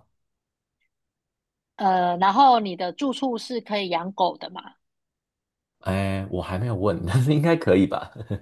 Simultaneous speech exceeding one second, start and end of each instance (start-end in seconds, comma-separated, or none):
none